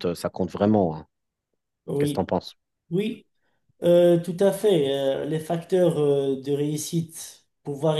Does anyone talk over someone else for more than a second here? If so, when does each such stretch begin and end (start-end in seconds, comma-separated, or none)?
none